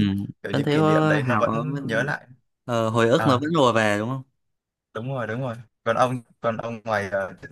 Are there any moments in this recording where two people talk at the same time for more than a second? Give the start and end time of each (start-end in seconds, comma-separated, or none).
0.5-2.1